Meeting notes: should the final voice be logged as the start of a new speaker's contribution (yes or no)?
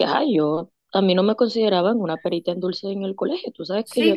yes